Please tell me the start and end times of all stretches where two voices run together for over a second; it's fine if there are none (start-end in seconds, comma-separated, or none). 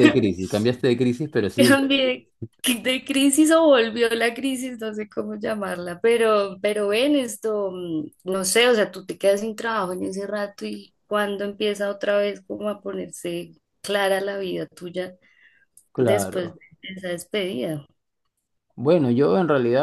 none